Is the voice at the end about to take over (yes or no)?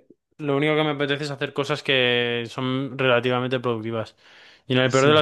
no